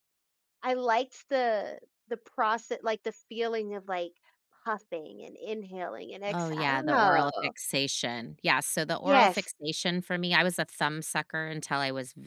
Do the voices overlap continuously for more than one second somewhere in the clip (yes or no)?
yes